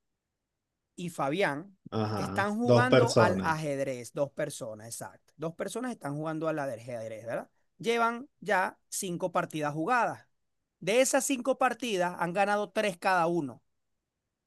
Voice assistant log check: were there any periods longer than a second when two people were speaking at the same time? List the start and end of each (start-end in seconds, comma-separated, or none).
2.1-3.6